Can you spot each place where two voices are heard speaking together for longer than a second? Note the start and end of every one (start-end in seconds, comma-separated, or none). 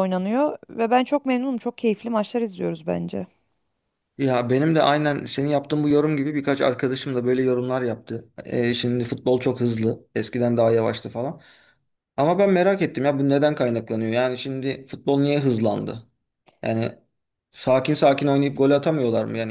none